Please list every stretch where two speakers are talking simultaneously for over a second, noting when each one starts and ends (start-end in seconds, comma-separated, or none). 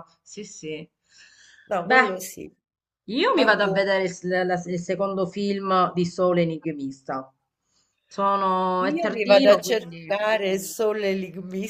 8.8-10.1